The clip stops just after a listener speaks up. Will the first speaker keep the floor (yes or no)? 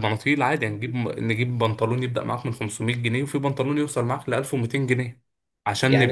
yes